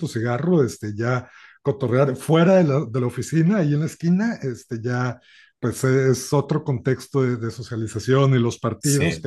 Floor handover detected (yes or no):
no